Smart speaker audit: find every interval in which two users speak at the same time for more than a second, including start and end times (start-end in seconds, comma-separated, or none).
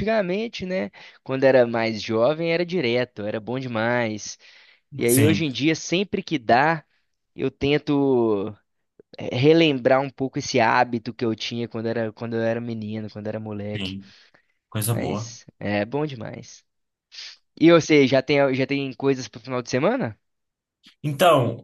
none